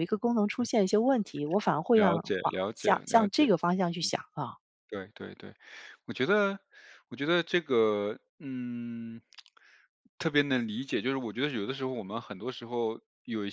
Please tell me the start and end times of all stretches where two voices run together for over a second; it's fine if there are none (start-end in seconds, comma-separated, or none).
1.9-3.5